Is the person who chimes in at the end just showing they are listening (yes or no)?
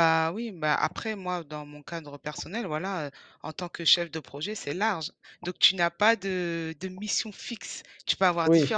yes